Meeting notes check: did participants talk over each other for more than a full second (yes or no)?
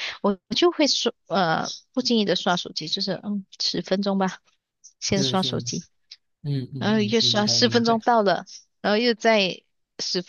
yes